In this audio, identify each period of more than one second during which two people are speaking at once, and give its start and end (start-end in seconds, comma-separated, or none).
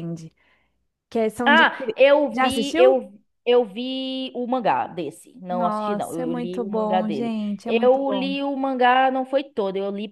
1.4-3.1, 5.5-8.3